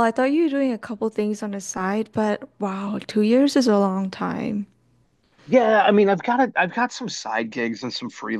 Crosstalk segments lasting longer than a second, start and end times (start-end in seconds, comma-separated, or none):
none